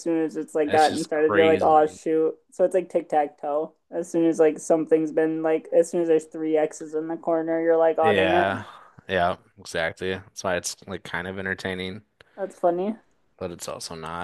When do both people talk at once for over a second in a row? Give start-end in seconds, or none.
0.7-2.0